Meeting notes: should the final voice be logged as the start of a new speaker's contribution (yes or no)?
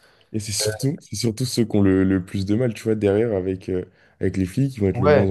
no